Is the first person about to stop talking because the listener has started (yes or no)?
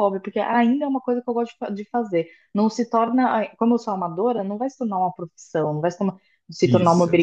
no